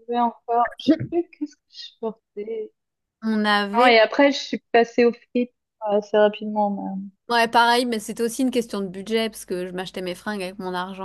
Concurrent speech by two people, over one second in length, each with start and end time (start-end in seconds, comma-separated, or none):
none